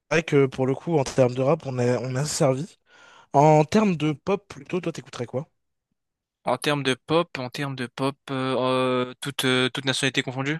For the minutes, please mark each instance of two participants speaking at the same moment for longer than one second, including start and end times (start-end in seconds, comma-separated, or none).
none